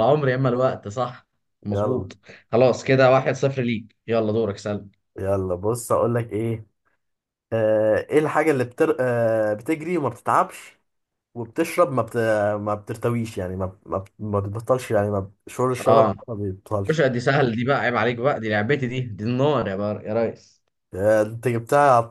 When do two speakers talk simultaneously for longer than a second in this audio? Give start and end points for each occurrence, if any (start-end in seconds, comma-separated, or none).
none